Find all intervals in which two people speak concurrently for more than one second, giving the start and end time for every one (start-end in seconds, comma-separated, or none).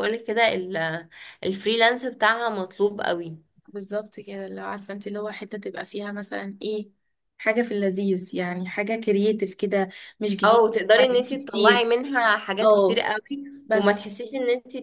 10.4-11.9